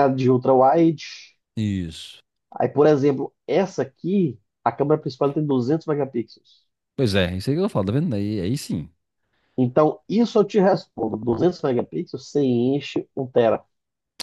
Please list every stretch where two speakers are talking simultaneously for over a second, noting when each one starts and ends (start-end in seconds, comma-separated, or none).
none